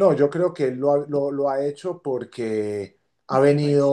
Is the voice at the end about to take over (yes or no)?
no